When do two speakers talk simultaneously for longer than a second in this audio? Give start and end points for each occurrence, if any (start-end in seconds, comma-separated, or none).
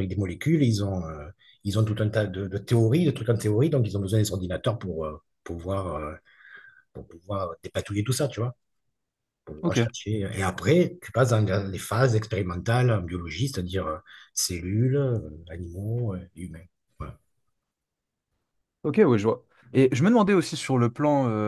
none